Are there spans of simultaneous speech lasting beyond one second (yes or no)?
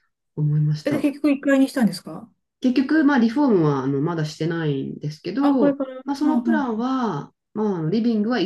yes